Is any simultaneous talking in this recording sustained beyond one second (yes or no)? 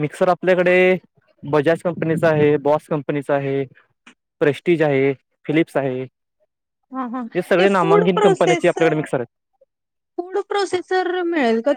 yes